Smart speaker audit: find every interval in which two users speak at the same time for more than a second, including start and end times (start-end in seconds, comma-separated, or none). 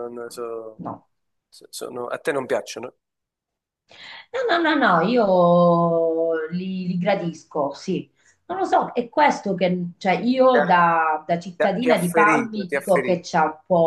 11.6-13.3